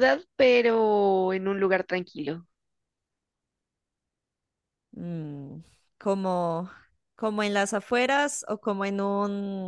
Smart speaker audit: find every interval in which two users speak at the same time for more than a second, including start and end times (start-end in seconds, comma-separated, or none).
none